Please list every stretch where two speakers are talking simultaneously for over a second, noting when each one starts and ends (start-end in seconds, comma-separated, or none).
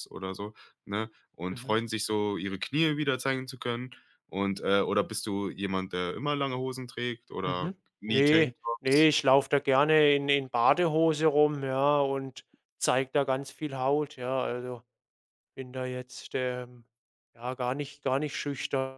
7.4-9.1